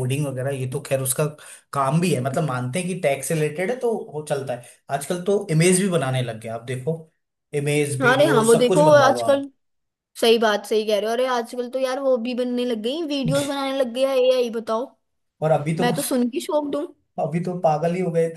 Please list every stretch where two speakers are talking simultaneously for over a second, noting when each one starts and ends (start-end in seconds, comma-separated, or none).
8.0-9.4